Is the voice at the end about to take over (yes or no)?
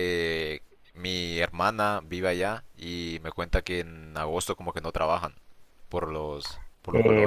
yes